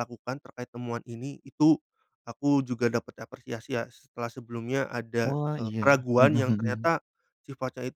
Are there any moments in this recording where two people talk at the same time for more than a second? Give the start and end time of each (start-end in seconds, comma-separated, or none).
5.2-6.9